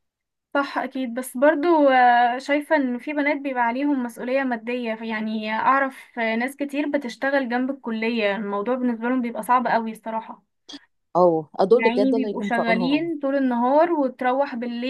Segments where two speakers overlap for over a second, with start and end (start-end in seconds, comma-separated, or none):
11.7-13.1